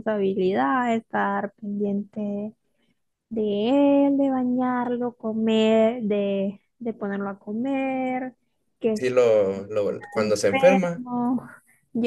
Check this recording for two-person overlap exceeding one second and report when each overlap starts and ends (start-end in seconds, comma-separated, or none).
9.8-11.0